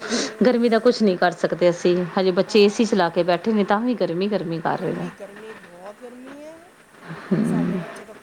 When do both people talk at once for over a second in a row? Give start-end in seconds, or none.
none